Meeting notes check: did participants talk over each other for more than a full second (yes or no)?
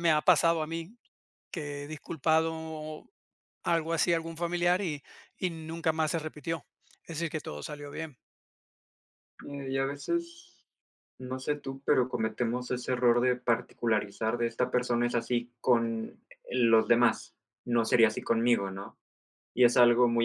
no